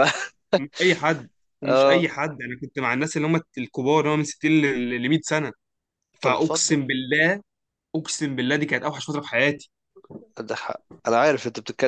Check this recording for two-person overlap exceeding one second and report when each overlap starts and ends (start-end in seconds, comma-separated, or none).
none